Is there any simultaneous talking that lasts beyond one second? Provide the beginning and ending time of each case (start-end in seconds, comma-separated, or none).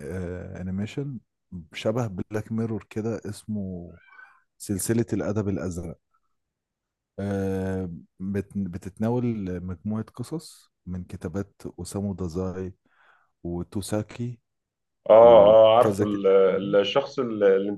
15.2-16.8